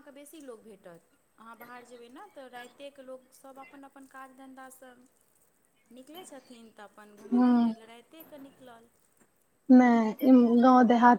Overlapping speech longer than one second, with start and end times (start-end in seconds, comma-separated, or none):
none